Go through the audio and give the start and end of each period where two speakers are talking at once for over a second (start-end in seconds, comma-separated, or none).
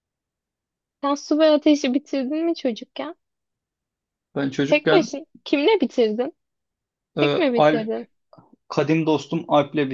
none